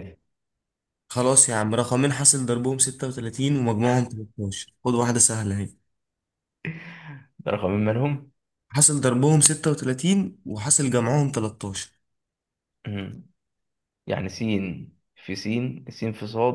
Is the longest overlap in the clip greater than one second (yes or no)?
no